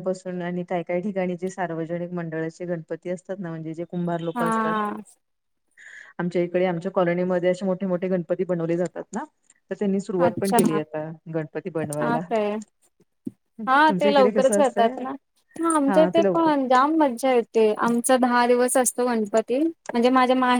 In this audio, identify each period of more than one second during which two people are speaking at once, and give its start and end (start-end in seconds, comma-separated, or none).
13.7-14.9